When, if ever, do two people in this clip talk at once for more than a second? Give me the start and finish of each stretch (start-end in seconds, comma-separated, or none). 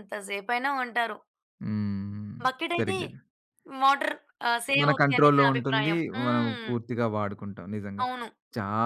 4.8-6.7